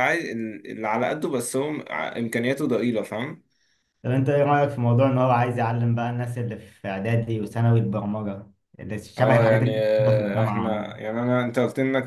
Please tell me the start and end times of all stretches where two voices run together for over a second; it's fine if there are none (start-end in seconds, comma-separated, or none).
9.2-11.0